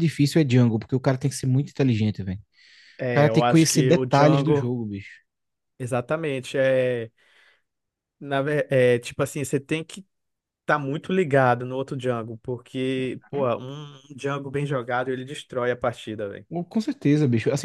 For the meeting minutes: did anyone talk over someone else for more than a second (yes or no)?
yes